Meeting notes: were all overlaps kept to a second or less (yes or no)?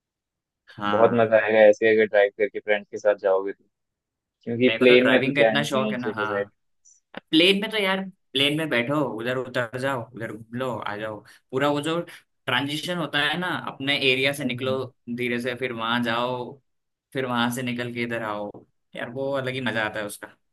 no